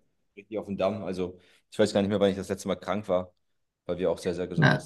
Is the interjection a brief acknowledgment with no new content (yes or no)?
no